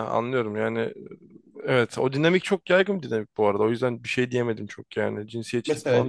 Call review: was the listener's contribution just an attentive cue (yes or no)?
no